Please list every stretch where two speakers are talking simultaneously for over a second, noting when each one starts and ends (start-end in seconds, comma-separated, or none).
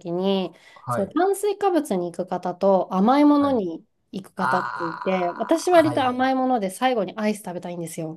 4.4-6.3